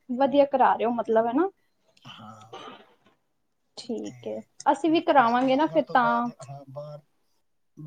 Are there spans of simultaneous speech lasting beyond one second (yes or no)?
yes